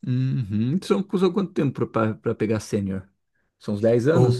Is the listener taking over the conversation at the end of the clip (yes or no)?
yes